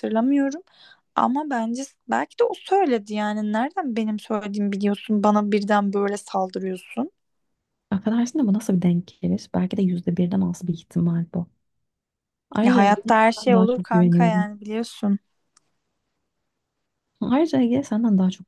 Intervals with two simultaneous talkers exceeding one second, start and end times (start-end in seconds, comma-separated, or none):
12.6-14.5